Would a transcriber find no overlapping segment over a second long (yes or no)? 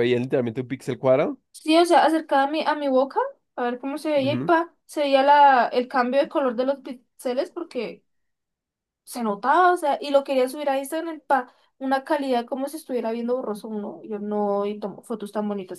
yes